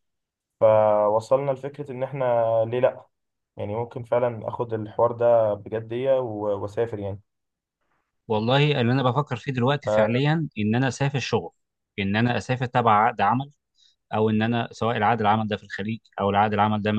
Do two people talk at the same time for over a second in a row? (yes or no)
no